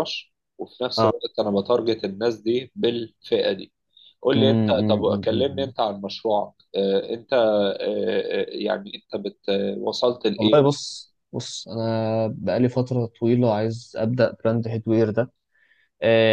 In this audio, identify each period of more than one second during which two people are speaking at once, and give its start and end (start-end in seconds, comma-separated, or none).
4.3-5.7